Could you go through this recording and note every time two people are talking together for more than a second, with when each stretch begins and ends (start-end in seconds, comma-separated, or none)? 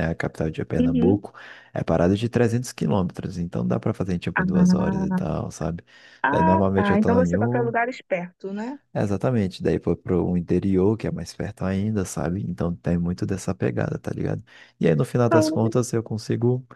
6.3-7.7